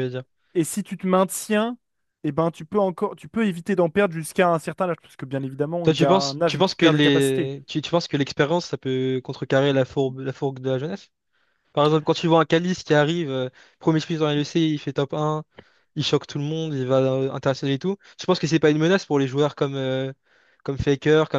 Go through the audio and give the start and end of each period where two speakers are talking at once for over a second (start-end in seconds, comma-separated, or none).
5.8-7.5